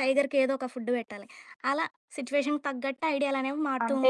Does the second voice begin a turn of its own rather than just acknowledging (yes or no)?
yes